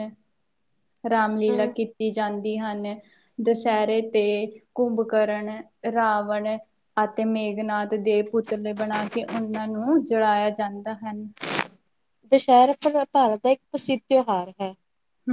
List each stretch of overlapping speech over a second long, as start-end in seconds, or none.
none